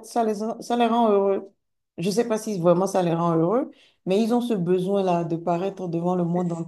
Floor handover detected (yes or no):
no